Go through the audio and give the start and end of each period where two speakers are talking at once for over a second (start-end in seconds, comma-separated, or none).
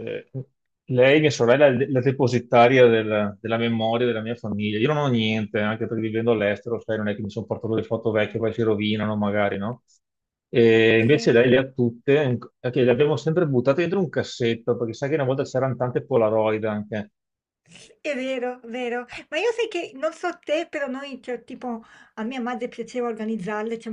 none